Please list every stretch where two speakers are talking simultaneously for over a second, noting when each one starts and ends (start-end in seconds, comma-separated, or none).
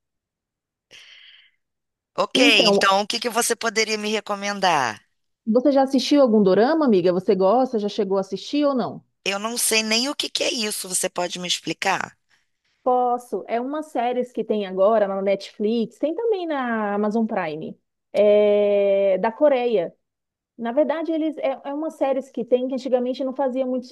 none